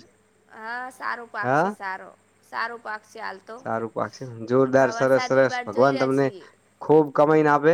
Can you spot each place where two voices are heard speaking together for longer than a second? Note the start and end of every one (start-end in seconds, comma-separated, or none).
4.7-6.3